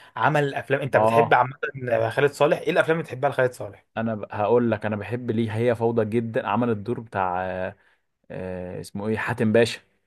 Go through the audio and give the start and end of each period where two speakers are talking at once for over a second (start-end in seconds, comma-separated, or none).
none